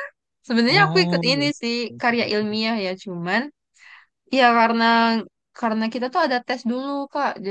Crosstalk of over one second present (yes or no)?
yes